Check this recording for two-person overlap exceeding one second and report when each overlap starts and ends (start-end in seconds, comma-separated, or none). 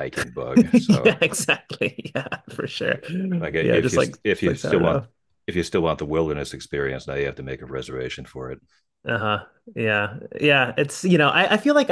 3.6-5.0